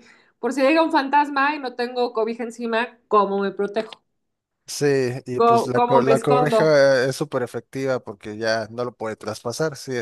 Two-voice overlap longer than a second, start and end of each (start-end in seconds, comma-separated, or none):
5.3-6.7